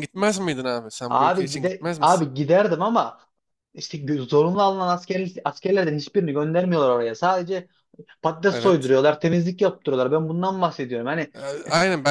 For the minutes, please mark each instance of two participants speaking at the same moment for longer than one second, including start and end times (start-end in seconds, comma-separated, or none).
1.1-2.3